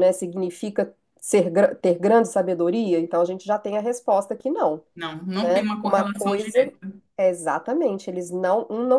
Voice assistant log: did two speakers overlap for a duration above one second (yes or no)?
yes